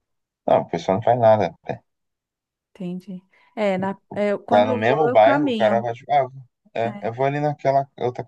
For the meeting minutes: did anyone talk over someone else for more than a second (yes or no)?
yes